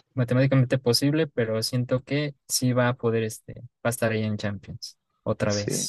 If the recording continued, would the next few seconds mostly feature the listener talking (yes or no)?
yes